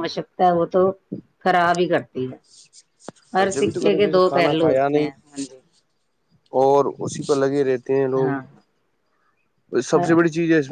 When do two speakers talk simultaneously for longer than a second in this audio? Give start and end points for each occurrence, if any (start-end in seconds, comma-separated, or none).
3.5-5.1